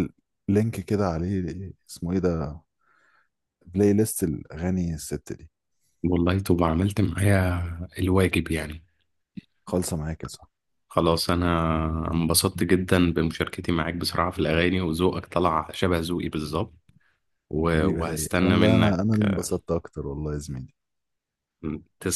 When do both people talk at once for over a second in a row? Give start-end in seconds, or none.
17.7-19.0